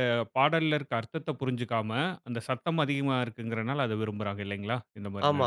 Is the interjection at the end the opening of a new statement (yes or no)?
yes